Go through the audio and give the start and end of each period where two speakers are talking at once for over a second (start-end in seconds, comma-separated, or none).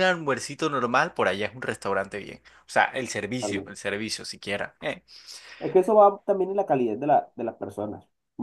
none